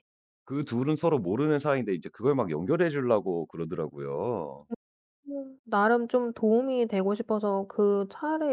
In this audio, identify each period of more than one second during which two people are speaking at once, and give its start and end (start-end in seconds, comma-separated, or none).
none